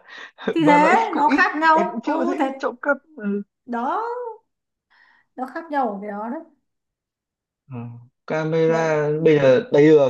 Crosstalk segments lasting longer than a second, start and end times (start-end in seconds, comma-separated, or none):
0.6-2.5